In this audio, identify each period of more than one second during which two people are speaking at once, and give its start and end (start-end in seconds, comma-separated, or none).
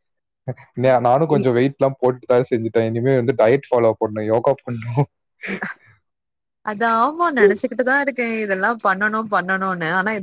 none